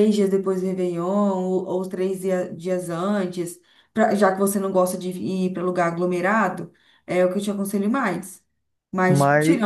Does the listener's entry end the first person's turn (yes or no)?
no